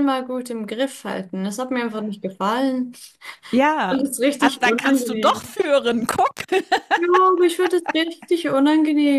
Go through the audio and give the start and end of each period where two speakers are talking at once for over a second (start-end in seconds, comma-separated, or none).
3.9-5.6